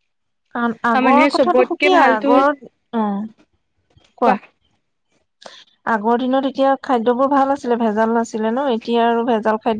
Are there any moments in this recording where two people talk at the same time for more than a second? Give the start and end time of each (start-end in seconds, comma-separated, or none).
0.9-2.5